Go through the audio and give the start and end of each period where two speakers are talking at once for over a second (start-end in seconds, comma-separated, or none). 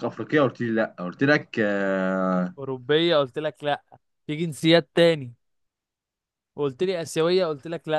none